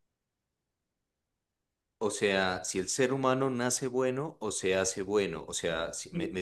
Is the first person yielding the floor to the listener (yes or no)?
no